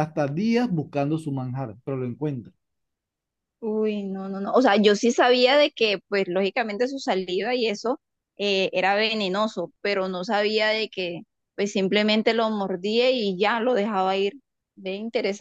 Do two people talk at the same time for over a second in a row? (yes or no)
no